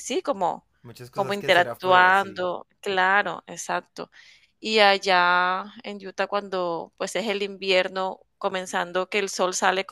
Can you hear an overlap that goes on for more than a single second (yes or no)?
yes